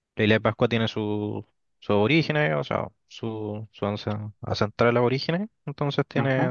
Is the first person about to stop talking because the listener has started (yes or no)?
no